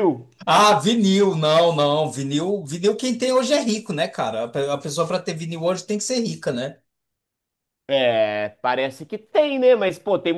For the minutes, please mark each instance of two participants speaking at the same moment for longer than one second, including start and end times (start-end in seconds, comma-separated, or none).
none